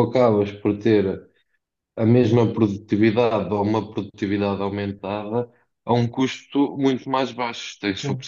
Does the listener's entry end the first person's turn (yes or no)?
no